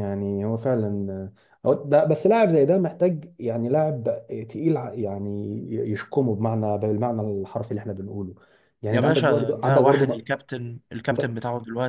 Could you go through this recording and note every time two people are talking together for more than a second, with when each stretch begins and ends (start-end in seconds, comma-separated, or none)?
8.9-10.2